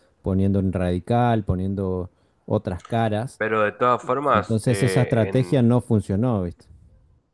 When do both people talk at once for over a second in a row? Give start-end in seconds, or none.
4.3-5.7